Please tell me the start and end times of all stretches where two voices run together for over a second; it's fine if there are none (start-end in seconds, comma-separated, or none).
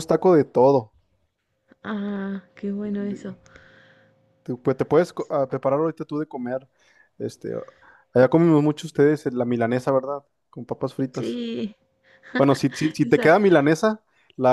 none